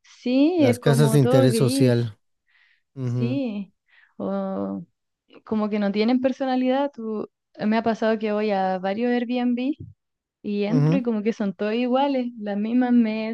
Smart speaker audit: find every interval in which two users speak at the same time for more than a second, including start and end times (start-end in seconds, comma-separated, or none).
0.6-1.9